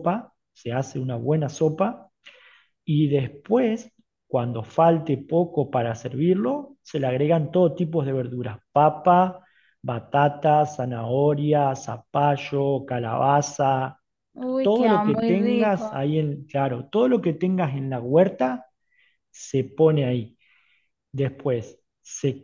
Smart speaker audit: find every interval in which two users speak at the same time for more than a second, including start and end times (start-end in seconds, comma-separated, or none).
14.6-15.9